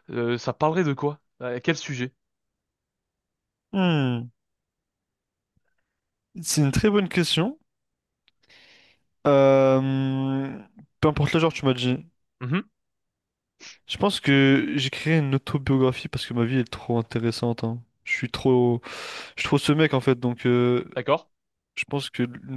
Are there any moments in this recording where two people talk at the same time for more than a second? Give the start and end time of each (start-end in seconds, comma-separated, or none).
none